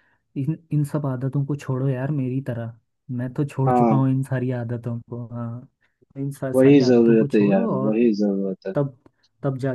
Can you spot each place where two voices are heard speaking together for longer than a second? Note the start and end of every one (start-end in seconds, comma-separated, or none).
6.5-8.0